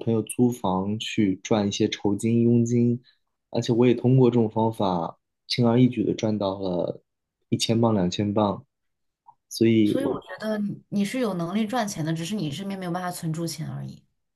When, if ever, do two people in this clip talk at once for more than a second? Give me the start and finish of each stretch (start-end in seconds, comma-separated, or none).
none